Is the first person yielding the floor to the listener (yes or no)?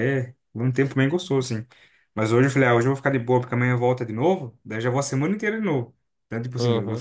yes